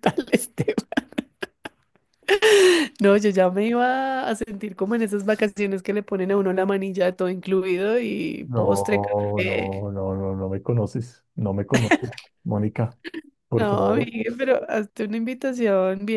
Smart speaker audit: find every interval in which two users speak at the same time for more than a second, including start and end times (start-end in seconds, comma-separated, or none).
8.4-9.8